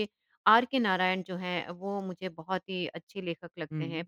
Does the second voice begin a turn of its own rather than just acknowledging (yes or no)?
no